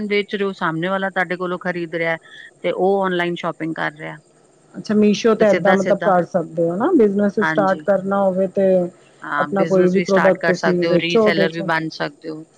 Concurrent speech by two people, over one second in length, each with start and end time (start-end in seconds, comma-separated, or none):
9.4-11.6